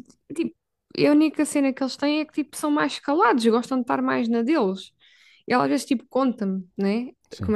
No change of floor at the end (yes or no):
yes